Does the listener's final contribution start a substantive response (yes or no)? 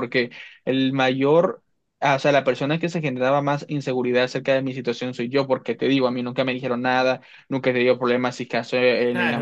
yes